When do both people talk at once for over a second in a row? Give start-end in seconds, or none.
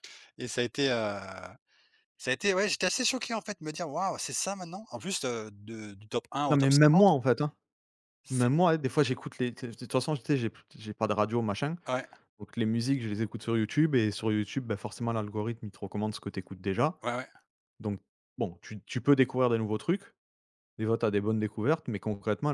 none